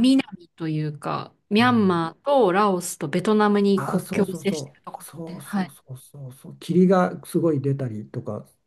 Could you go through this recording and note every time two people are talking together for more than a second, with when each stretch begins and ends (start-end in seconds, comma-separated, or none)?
3.8-5.7